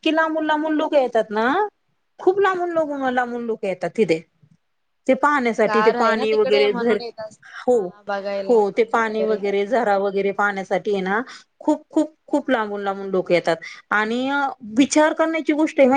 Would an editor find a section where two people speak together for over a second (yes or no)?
yes